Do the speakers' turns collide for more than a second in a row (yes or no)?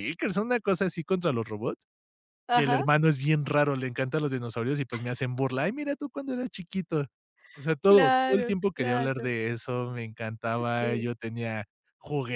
yes